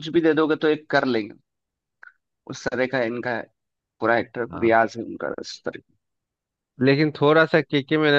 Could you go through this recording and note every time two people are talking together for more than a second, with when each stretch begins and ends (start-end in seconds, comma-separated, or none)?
none